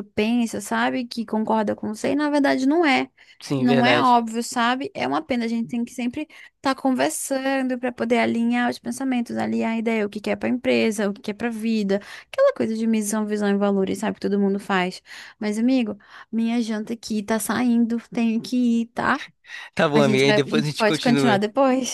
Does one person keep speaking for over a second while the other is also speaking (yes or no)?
yes